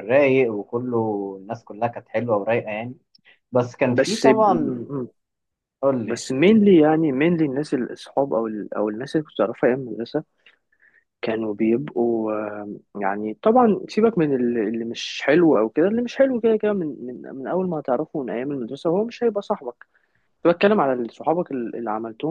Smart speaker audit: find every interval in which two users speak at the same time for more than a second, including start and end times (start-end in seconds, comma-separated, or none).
none